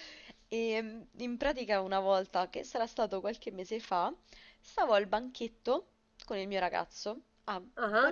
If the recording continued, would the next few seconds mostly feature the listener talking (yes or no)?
no